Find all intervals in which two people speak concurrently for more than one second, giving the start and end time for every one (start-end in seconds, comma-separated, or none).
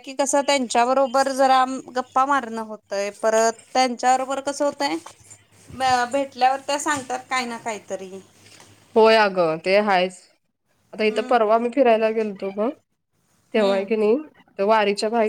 none